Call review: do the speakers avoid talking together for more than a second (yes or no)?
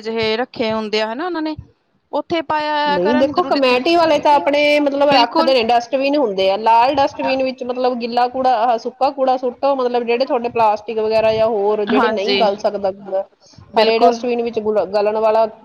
yes